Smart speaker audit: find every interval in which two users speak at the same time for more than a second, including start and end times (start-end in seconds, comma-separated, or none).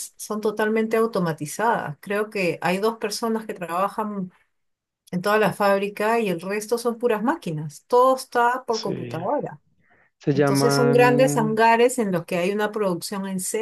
10.3-11.6